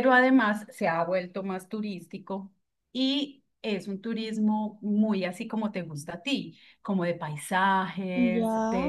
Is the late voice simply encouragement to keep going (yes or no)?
yes